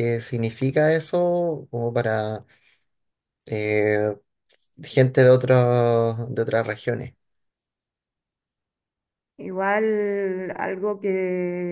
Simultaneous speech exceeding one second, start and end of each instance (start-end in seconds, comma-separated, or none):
none